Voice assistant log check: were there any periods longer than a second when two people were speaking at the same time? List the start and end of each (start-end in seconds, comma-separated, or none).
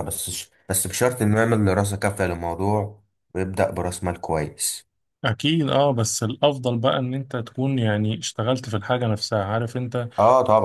none